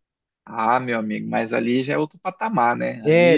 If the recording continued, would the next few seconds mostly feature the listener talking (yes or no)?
yes